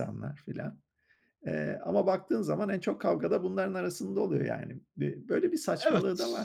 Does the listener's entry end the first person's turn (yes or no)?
yes